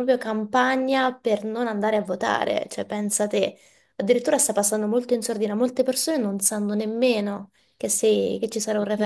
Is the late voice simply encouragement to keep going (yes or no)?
no